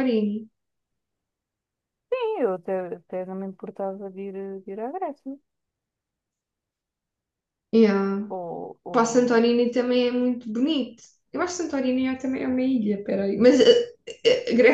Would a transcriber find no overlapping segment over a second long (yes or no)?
yes